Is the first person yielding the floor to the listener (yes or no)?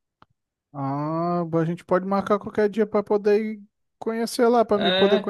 yes